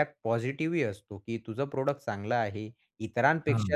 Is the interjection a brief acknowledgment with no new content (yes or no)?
yes